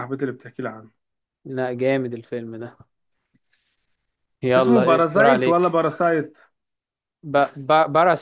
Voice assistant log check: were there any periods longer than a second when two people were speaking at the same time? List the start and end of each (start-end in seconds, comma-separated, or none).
4.6-5.8